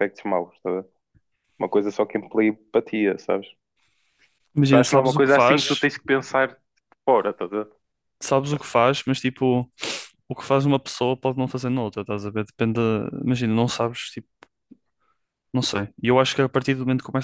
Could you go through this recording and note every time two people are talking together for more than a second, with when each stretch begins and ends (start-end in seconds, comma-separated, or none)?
4.6-5.9